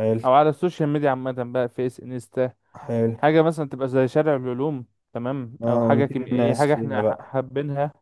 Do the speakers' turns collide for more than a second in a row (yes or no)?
yes